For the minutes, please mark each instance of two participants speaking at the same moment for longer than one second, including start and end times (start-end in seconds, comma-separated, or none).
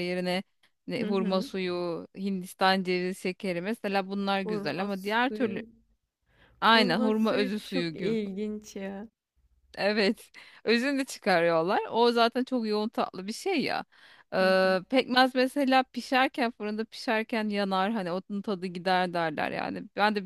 4.4-5.6, 6.7-8.2